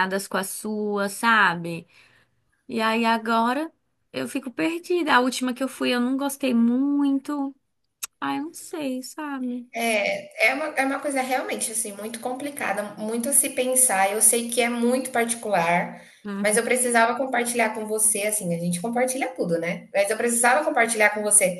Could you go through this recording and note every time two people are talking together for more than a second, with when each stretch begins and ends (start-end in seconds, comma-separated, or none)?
none